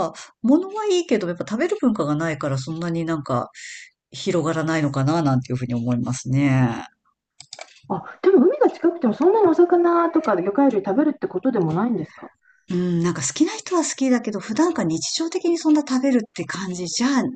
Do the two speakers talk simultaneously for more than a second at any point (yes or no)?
no